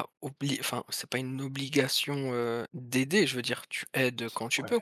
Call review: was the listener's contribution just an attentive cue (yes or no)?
no